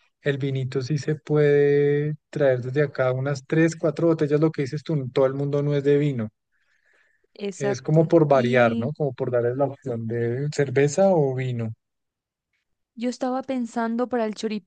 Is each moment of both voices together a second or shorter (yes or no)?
no